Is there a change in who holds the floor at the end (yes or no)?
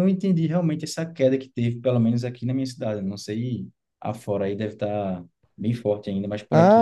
yes